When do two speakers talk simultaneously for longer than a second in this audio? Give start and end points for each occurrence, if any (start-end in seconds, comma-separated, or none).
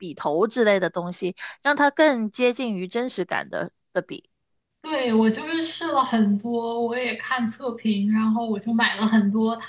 none